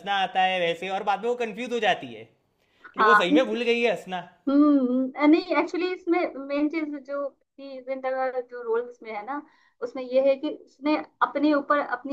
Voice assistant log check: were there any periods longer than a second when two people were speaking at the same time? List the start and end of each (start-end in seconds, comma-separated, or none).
none